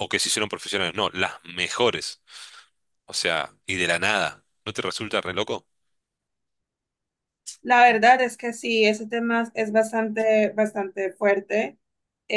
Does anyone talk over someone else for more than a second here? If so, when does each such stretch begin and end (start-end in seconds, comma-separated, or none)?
none